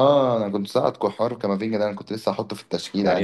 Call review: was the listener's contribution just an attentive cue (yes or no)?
no